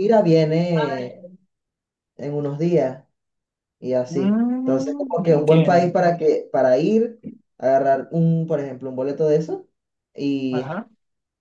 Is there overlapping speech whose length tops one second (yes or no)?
yes